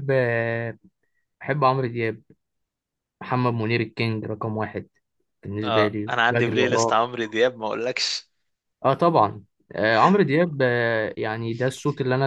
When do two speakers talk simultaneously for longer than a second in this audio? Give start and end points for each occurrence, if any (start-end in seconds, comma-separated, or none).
5.6-7.1